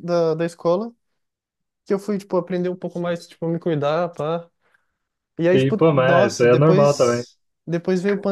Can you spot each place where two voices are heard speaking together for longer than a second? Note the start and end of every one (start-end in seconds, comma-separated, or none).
5.5-7.2